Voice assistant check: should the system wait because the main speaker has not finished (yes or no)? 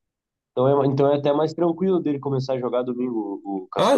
no